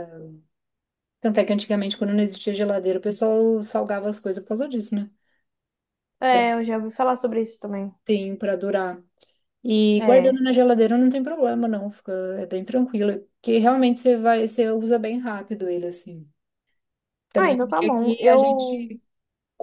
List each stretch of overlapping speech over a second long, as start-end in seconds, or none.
17.4-18.9